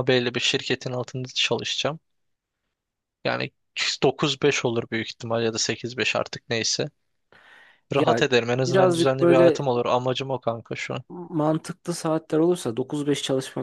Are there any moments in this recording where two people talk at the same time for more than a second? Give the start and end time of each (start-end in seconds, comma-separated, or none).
7.9-9.7